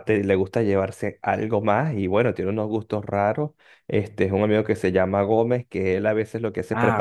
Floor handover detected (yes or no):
no